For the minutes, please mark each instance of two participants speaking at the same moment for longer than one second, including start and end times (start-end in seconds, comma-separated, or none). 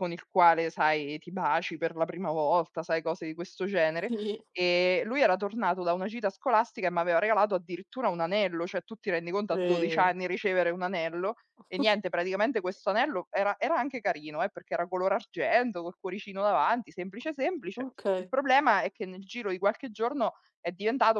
none